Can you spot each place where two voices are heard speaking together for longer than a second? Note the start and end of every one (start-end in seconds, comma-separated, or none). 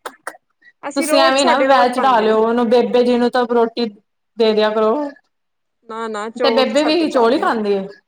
0.9-2.4